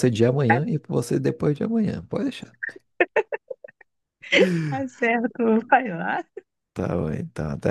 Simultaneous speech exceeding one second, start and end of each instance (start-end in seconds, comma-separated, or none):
none